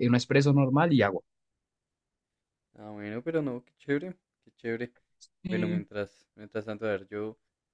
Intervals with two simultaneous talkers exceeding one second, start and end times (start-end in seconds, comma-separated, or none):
none